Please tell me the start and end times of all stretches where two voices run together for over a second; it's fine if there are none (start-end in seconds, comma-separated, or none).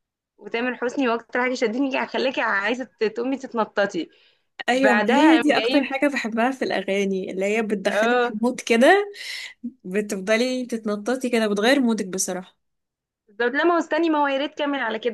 4.7-5.9